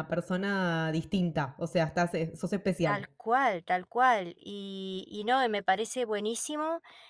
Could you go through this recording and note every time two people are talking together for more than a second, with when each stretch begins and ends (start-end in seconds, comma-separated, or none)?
none